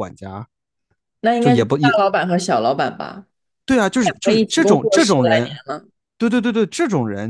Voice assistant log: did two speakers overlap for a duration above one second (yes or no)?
yes